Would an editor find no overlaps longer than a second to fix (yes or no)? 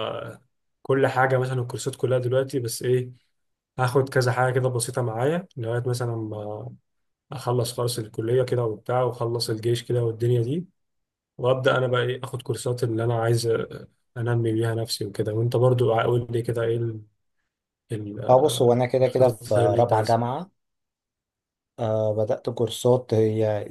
no